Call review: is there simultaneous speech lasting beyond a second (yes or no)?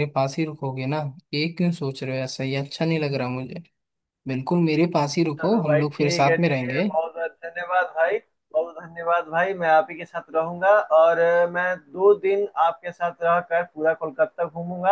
yes